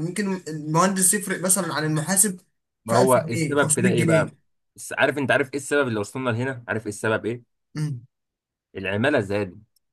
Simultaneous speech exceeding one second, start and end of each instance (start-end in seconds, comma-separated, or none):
2.9-4.3